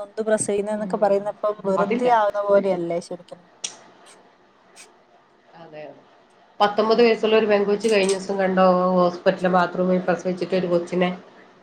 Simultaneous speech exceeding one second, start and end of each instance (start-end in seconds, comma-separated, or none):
none